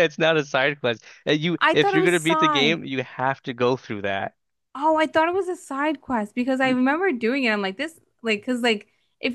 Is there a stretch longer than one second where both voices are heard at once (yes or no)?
yes